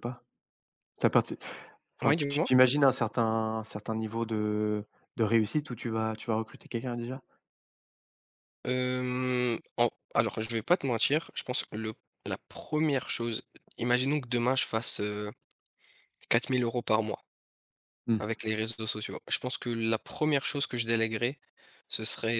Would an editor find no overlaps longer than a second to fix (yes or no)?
yes